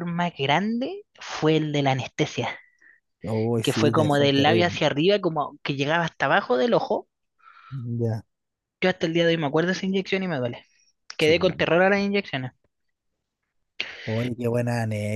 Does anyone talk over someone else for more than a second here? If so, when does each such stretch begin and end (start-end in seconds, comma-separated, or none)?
3.6-4.8